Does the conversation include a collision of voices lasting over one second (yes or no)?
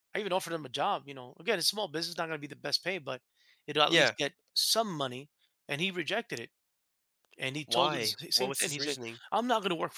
yes